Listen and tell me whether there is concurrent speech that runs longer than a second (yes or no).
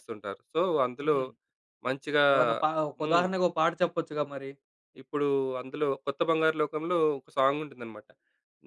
no